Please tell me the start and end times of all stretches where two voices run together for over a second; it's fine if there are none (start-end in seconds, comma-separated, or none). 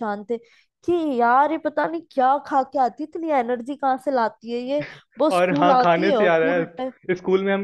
5.4-6.9